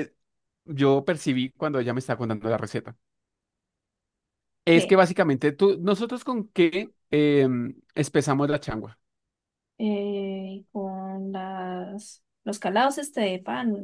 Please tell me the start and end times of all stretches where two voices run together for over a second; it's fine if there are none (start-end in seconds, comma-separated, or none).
none